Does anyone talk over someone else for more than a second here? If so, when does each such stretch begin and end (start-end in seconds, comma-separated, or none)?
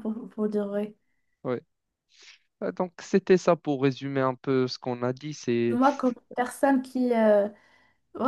none